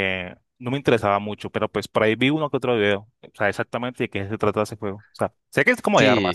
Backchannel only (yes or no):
no